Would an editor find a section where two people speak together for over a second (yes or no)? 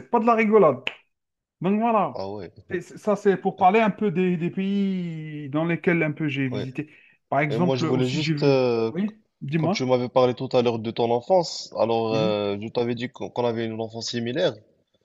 yes